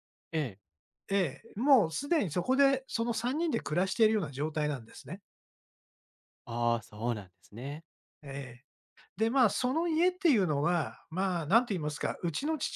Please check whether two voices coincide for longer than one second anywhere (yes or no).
no